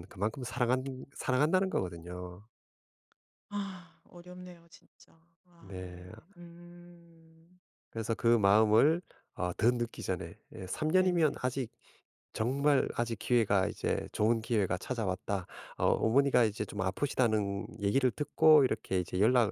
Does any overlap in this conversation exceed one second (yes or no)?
no